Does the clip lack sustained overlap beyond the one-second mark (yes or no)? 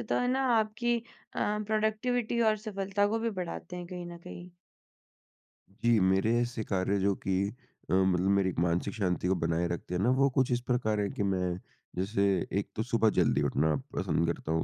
yes